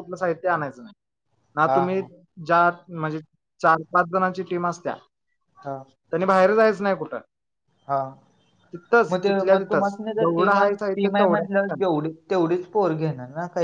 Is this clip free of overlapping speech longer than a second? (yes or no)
no